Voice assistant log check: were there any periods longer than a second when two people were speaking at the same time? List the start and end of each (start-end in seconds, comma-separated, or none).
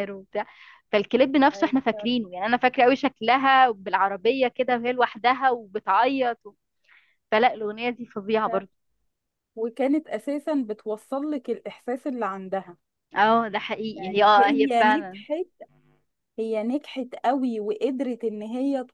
14.0-15.2